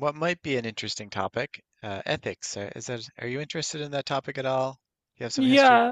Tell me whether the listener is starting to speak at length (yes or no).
yes